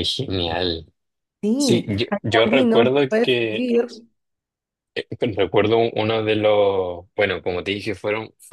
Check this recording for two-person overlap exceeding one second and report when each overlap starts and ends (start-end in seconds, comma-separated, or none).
1.6-3.7